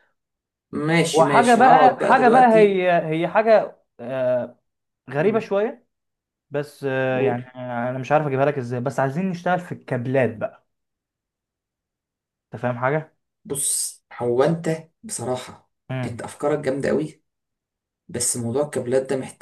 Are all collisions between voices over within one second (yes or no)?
no